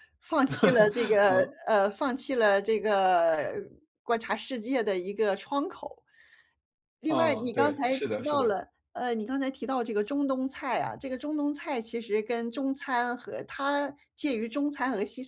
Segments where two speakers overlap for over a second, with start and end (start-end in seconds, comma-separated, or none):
7.1-8.5